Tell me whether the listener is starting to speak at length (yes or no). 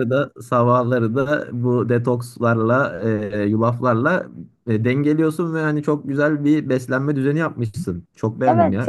yes